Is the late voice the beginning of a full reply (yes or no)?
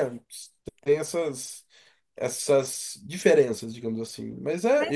yes